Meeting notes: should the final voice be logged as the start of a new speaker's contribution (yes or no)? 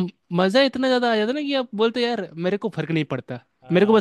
yes